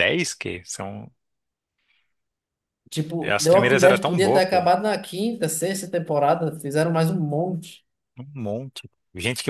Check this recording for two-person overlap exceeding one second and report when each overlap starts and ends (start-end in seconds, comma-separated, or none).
3.3-4.7